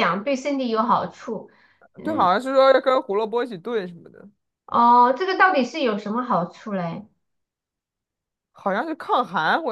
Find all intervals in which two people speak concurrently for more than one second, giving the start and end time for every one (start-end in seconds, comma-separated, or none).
none